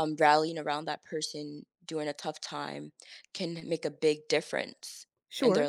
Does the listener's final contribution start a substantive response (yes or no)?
yes